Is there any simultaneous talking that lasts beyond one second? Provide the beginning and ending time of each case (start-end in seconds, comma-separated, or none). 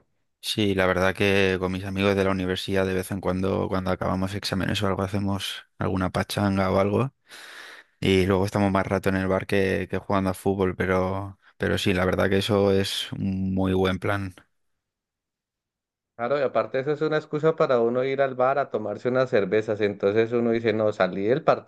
none